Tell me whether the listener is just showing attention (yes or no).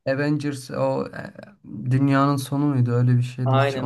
no